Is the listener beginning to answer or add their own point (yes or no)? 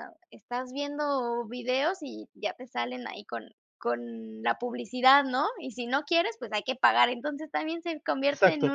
yes